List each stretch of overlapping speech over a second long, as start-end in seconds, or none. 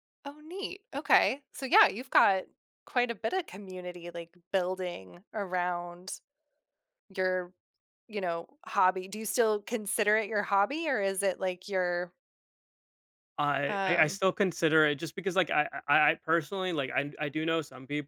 none